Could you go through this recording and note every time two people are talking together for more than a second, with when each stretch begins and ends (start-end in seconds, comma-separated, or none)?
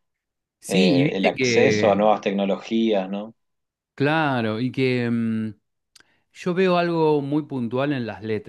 0.7-2.0